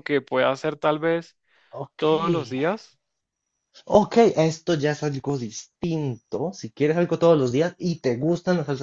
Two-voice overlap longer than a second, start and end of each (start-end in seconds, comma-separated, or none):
none